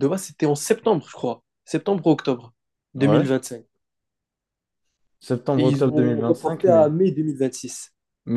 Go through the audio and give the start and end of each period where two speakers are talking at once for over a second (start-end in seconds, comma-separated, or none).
5.6-6.9